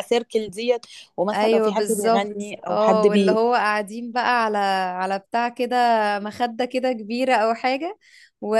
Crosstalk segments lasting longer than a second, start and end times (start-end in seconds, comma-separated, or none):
1.3-3.4